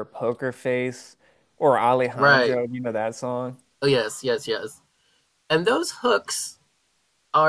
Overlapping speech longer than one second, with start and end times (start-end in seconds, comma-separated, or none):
none